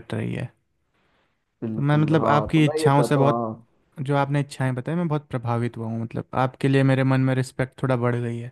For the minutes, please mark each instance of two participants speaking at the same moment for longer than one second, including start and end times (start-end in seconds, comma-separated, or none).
1.7-3.4